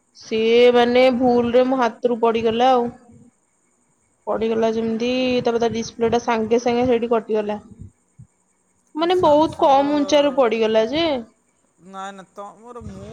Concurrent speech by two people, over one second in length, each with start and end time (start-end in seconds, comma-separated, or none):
9.0-10.5